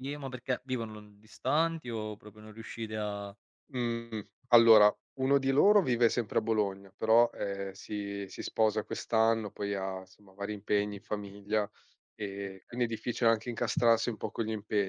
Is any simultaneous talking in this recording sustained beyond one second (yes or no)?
no